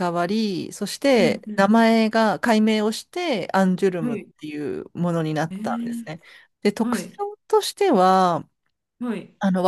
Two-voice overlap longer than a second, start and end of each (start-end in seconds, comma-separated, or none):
none